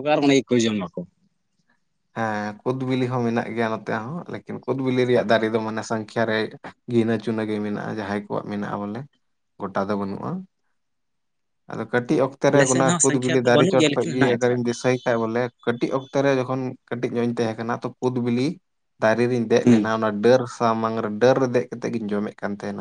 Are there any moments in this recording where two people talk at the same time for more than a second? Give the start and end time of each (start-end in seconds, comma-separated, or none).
12.5-14.8